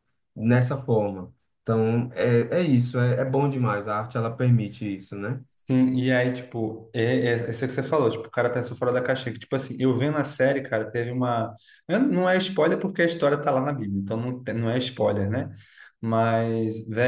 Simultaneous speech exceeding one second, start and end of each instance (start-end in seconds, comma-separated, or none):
none